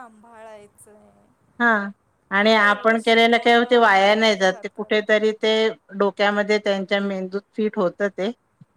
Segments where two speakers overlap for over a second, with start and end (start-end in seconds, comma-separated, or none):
2.6-5.1